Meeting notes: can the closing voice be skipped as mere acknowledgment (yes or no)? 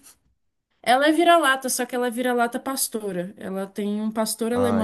no